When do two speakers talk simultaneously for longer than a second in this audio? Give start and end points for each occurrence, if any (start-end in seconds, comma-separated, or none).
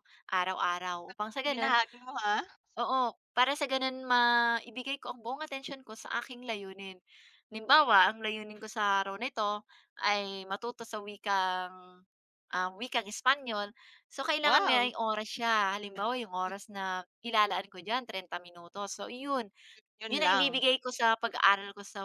none